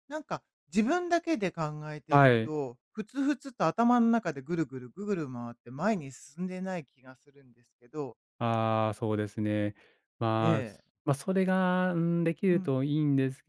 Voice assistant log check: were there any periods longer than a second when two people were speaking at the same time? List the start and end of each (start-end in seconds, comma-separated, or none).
none